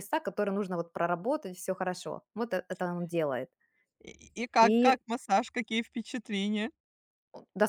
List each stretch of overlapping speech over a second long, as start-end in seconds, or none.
none